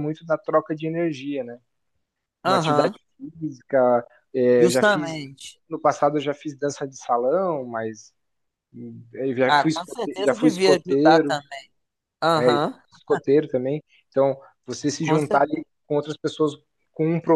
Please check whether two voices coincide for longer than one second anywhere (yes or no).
yes